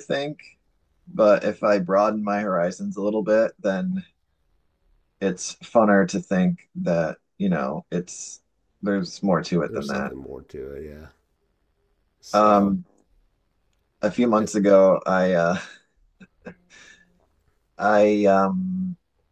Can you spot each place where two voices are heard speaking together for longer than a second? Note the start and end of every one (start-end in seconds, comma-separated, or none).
none